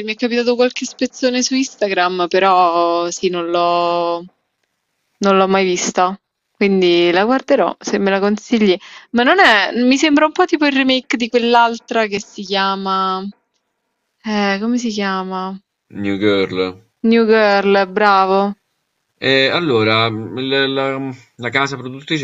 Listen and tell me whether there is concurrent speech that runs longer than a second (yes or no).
no